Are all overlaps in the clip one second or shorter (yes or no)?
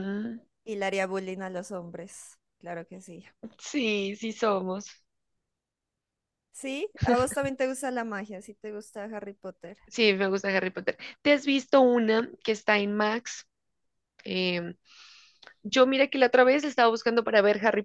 yes